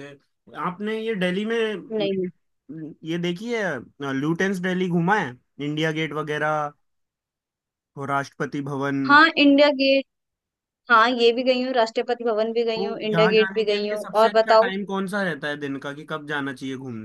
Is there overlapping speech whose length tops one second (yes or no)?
yes